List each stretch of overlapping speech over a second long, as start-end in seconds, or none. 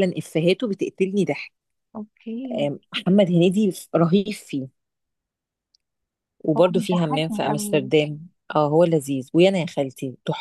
6.5-7.9